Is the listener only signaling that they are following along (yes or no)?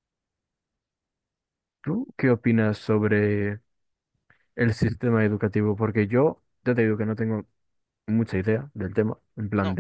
yes